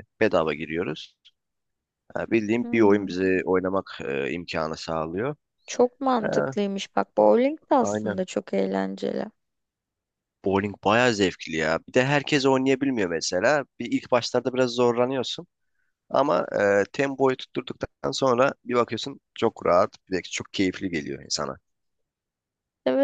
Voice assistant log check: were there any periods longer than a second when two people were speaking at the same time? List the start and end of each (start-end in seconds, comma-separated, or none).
none